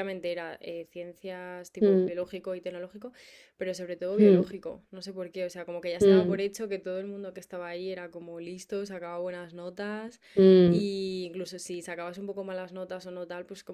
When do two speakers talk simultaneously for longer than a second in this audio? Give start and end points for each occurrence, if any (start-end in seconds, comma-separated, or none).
none